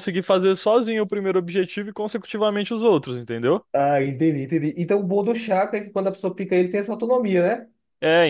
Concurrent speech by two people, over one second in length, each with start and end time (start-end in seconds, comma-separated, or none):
none